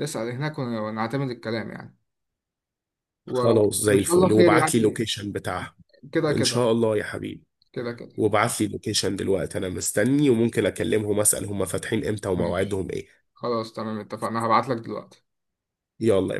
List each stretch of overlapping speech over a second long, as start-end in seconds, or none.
3.3-5.0